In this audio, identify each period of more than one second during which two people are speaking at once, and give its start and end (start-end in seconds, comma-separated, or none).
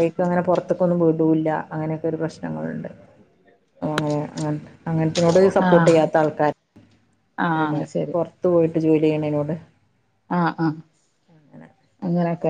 none